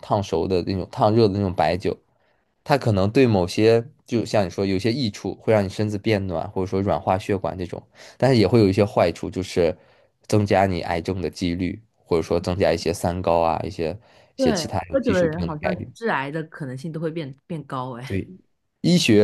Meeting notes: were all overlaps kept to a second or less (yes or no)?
no